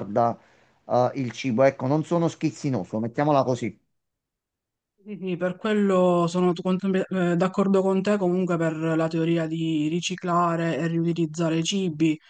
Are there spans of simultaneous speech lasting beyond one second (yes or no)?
no